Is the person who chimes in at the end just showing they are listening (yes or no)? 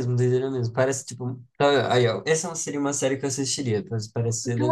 no